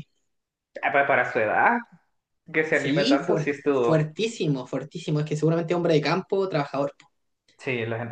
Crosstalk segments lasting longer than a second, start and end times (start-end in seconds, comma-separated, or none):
2.7-4.1